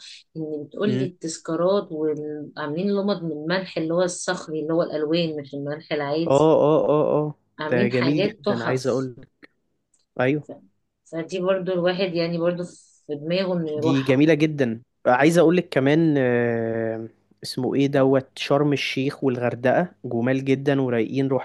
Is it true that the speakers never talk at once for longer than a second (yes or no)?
no